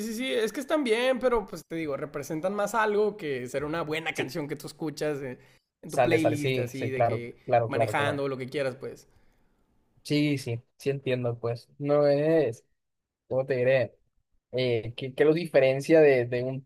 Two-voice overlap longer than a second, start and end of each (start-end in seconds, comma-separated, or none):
5.9-8.2